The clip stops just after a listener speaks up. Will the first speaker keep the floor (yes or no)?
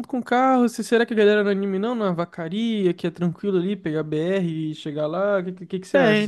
no